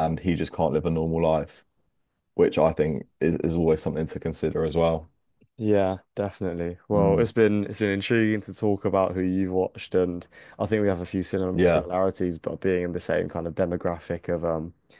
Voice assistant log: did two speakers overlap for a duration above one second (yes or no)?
no